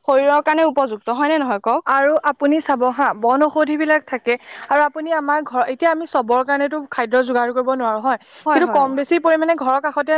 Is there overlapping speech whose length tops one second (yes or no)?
no